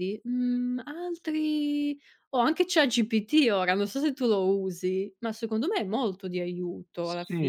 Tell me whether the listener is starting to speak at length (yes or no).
yes